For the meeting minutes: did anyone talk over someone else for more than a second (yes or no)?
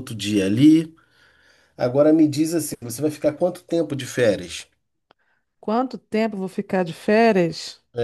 no